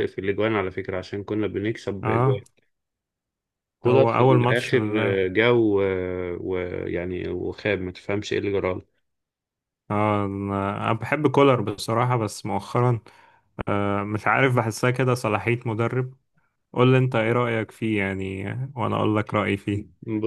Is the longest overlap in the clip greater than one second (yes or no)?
yes